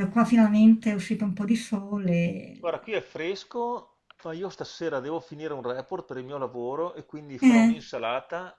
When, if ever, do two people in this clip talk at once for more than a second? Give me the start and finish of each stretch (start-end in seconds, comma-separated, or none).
none